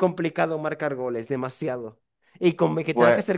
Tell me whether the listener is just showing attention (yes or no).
yes